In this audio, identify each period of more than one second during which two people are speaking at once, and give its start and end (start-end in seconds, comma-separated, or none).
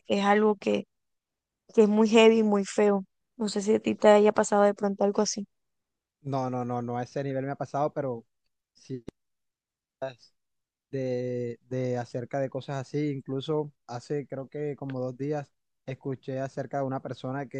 none